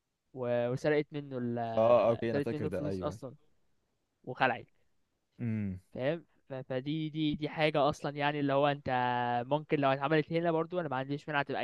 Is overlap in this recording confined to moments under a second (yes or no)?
no